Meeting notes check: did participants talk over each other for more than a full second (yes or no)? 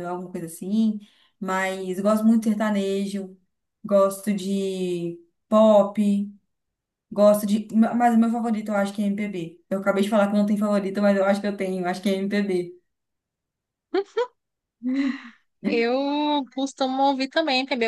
no